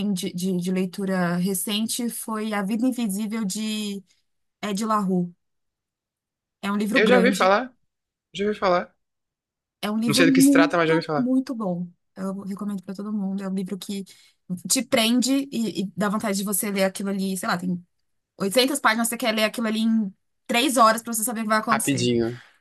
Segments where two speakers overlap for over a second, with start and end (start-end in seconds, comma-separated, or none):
10.1-11.3